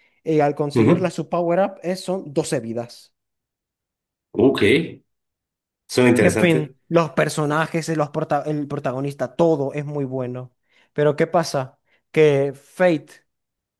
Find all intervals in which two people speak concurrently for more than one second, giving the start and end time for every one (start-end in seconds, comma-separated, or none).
none